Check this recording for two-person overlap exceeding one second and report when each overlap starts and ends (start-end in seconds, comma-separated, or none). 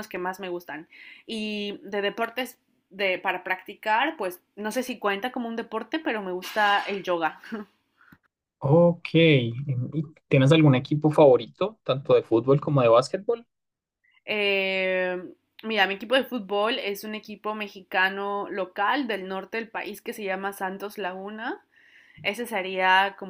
none